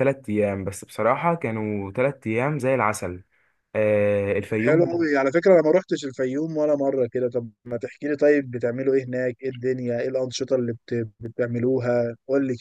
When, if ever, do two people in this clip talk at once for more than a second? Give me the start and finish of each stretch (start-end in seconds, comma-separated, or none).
none